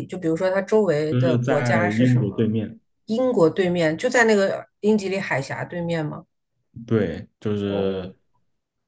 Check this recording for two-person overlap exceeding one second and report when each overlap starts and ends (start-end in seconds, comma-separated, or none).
1.1-2.5